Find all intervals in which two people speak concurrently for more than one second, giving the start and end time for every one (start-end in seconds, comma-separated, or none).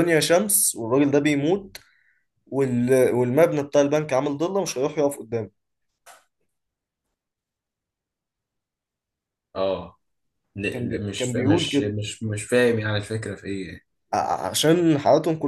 10.7-11.9